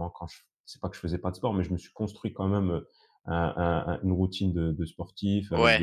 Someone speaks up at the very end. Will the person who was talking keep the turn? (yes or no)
yes